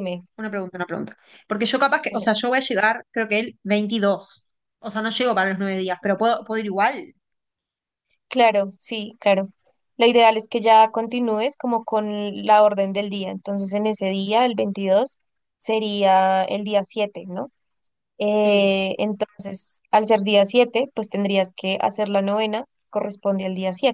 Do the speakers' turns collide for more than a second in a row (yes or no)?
no